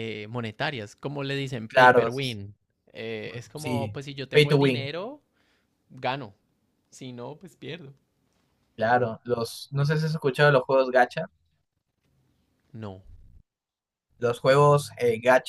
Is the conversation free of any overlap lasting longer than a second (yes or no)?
no